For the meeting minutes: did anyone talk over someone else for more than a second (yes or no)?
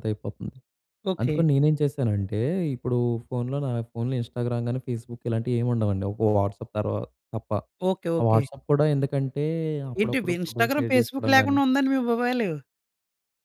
yes